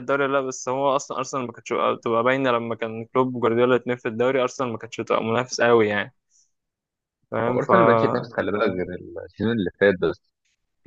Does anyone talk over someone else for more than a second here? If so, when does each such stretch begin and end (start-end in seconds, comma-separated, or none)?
none